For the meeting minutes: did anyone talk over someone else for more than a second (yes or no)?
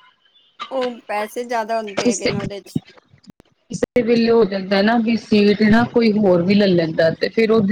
no